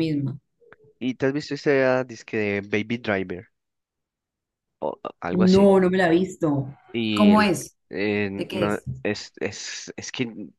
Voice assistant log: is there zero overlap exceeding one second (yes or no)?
yes